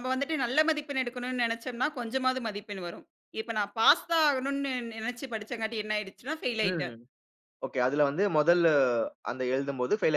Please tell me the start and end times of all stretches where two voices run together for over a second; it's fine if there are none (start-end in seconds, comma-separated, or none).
none